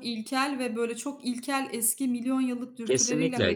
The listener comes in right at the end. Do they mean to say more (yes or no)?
yes